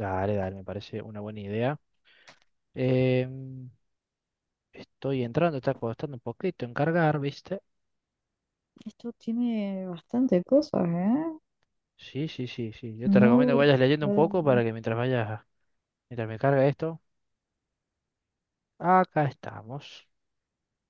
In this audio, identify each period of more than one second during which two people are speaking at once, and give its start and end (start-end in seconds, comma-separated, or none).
13.2-14.6